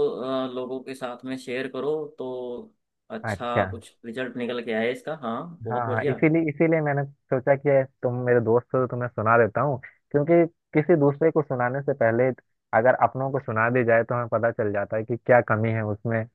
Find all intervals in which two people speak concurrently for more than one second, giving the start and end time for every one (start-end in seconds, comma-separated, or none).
none